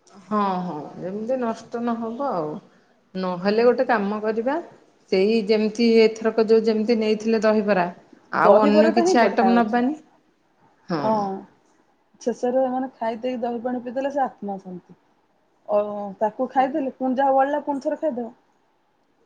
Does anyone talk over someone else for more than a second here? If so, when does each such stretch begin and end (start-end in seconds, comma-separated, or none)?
8.4-9.8